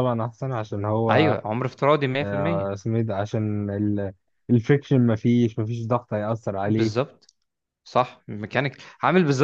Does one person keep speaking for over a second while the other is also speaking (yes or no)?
no